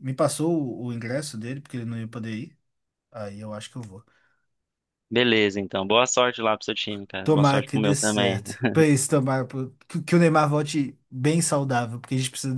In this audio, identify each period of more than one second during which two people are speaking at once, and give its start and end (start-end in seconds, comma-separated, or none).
7.2-8.4